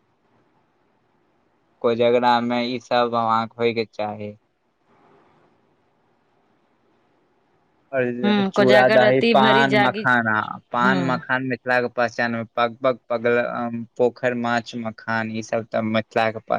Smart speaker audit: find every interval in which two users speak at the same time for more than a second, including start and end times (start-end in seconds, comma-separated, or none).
8.2-10.1